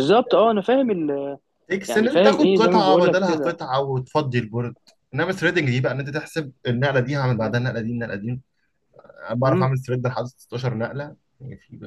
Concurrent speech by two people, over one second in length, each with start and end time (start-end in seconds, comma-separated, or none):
1.9-3.6